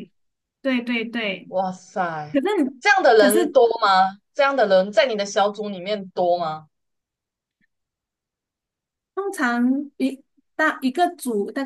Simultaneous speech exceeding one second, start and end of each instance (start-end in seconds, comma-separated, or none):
none